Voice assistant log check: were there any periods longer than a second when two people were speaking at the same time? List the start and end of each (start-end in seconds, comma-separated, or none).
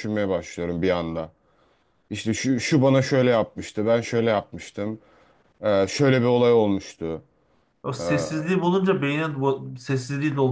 none